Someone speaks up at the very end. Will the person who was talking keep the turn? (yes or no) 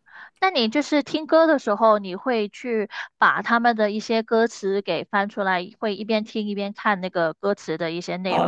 no